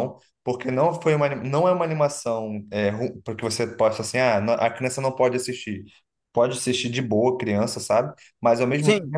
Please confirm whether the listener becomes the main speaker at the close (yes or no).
no